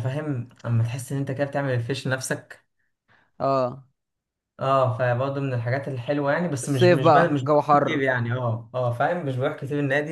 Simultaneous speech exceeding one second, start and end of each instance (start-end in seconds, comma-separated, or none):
6.6-8.0